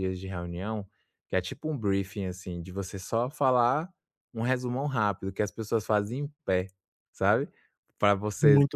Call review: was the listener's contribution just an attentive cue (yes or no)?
yes